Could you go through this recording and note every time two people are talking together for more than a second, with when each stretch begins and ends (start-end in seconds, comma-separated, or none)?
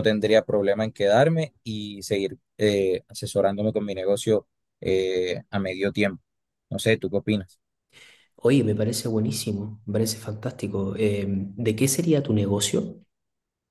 none